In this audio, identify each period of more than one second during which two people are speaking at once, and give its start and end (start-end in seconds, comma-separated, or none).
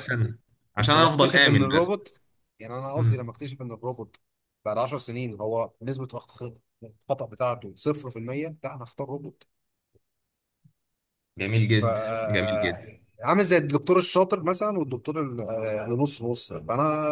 0.9-2.1